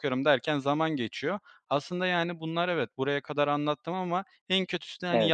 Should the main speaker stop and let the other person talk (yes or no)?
no